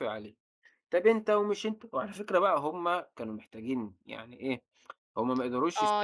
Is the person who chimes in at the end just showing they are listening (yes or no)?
no